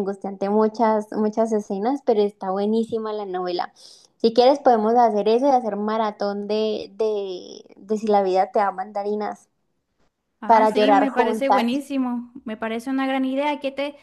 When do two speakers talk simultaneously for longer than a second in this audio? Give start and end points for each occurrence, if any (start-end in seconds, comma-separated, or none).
10.5-11.7